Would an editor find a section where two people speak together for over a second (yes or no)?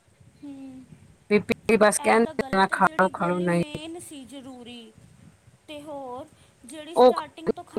yes